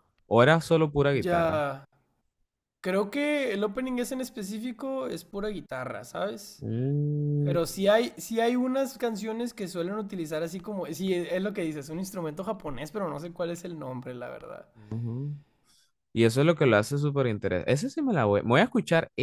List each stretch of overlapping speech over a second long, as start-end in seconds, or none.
none